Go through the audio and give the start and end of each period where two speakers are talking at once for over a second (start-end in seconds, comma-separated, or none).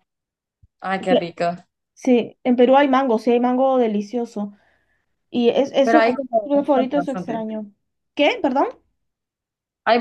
5.8-7.5